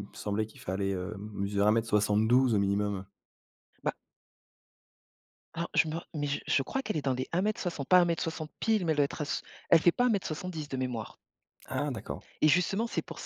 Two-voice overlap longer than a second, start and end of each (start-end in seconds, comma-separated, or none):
none